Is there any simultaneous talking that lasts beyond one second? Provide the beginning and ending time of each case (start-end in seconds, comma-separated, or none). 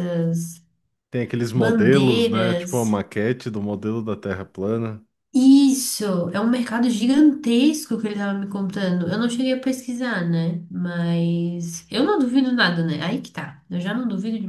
1.5-2.9